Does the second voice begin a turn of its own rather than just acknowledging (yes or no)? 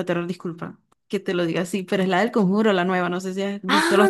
yes